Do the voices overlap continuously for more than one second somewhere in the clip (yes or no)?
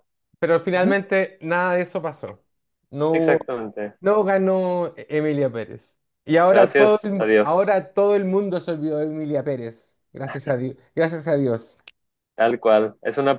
yes